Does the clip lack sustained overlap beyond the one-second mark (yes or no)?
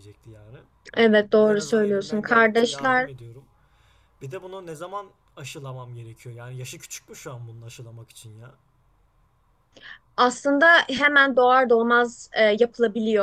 no